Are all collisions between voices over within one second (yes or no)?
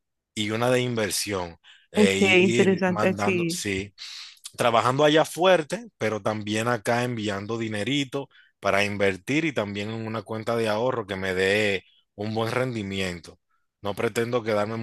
no